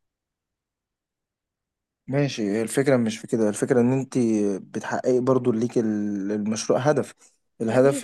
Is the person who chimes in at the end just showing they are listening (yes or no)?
yes